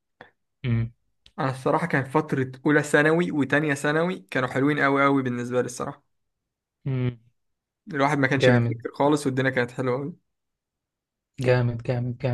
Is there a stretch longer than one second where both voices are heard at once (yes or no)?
no